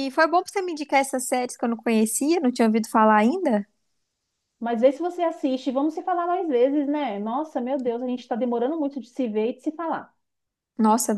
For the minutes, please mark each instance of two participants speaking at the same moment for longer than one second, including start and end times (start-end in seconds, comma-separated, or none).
none